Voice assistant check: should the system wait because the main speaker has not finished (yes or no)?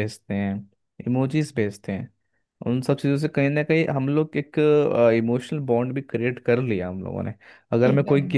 yes